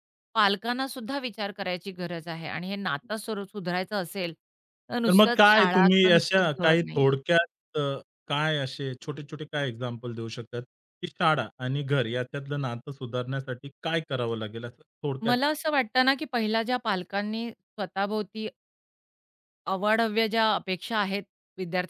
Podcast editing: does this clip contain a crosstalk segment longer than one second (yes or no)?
yes